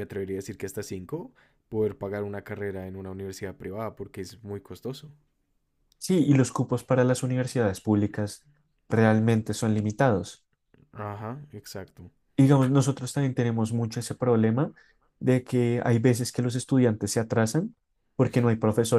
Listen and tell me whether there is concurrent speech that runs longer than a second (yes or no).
no